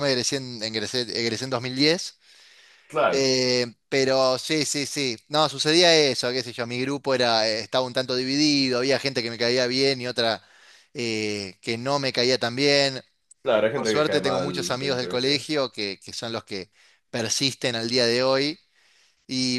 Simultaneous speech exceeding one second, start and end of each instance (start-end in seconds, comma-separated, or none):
13.7-15.4